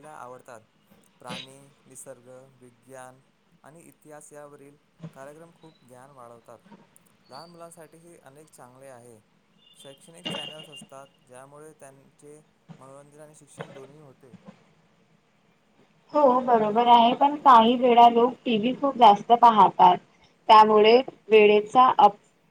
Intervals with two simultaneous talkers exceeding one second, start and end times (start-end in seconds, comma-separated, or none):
none